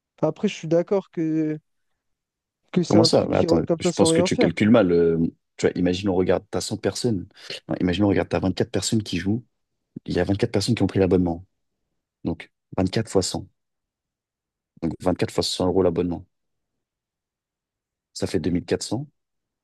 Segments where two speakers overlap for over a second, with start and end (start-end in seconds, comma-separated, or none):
2.9-4.5